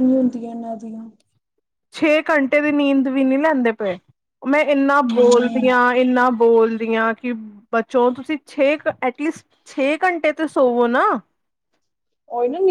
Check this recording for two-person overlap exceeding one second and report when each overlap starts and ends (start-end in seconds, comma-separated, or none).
none